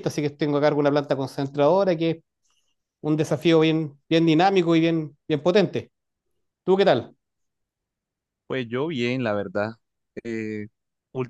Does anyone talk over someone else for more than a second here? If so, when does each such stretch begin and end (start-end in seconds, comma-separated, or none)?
none